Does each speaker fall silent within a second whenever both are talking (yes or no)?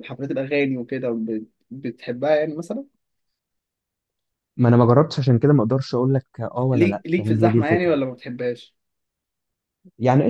no